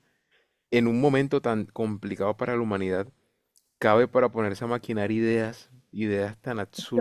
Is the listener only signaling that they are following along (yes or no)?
no